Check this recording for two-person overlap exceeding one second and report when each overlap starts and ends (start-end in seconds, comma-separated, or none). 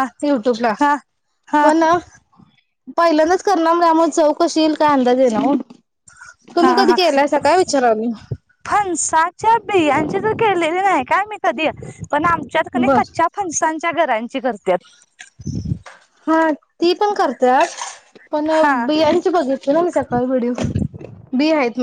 none